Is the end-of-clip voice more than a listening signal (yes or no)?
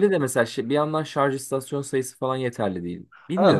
yes